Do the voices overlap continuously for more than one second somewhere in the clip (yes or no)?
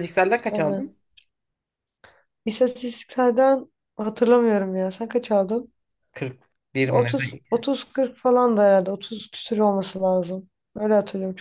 no